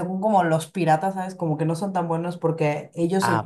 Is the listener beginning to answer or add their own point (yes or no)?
no